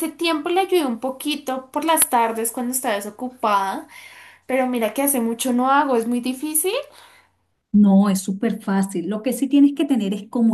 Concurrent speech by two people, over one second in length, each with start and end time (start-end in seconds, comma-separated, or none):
none